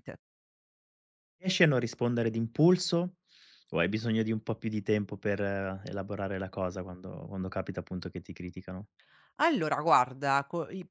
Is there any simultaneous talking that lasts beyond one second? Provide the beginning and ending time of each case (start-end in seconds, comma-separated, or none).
none